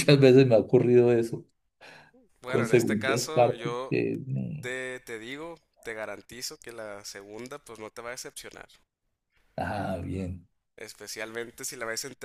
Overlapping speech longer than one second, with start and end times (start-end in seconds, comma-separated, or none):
2.5-4.0